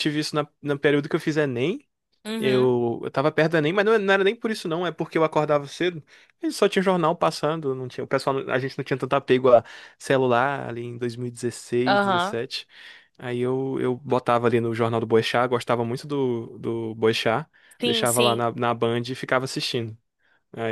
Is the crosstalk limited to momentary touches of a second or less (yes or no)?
yes